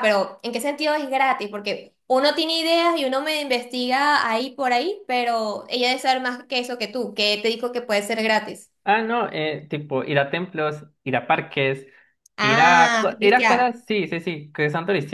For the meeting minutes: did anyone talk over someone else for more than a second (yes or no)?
yes